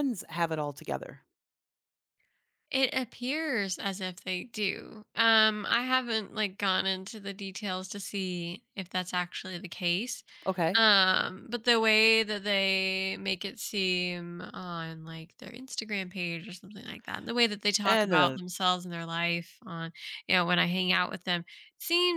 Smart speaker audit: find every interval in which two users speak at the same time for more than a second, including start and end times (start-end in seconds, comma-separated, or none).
none